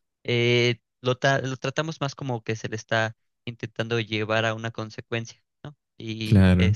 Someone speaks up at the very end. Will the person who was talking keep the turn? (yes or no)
yes